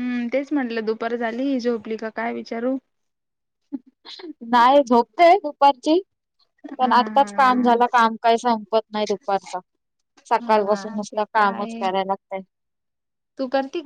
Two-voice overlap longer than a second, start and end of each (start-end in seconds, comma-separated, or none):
10.4-11.8